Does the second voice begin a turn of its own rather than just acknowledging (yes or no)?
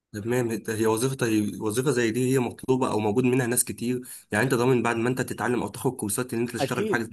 yes